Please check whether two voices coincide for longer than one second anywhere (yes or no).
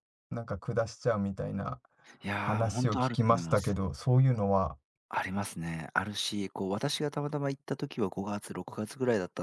yes